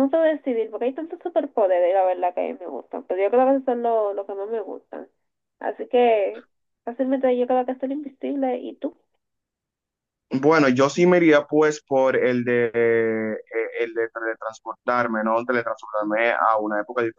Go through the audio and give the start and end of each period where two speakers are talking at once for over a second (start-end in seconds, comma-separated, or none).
none